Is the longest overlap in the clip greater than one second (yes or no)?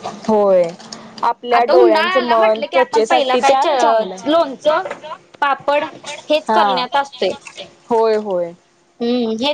yes